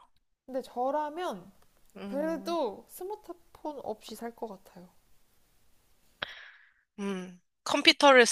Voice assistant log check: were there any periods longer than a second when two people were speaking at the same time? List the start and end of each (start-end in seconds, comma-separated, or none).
none